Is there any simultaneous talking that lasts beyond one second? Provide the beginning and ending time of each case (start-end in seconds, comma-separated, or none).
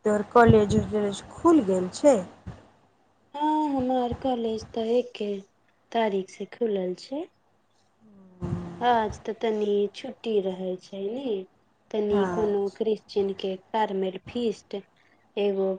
none